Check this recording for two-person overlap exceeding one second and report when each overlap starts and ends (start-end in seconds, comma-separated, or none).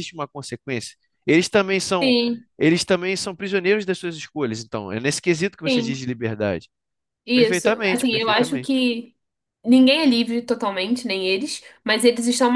7.3-8.8